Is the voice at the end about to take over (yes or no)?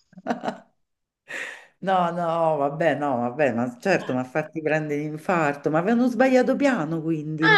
yes